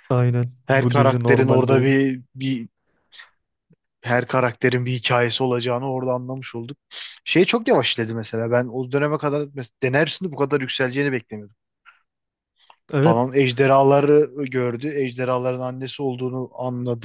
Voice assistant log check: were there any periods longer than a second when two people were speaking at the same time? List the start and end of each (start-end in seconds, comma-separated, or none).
0.7-1.9